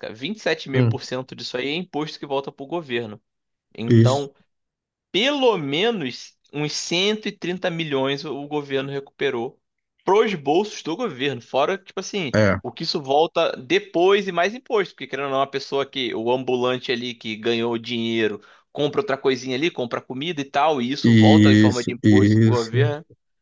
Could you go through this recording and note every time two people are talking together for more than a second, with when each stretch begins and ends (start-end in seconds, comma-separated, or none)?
21.0-22.9